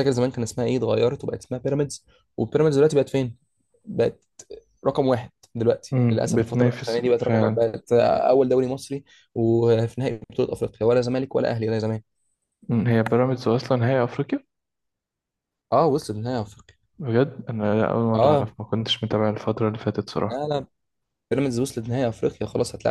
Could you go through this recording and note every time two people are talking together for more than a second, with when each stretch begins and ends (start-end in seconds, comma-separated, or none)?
5.9-7.7